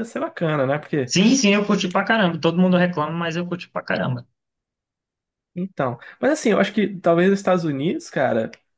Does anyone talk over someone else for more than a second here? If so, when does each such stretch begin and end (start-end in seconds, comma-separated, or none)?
none